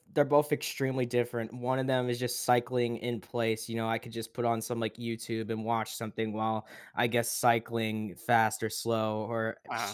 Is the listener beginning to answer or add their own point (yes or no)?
no